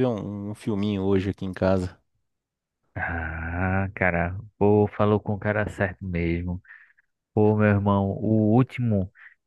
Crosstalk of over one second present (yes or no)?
no